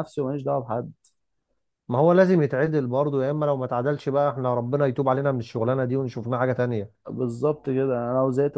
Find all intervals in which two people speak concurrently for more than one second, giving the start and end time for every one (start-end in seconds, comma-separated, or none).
none